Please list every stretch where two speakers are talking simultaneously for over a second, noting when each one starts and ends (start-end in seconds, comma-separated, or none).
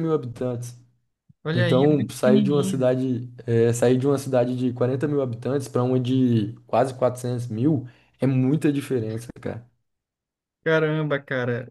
1.5-2.9